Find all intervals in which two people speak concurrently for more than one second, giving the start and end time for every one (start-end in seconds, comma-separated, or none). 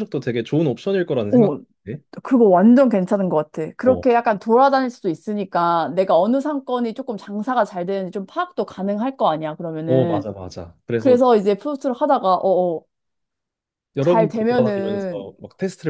14.0-15.3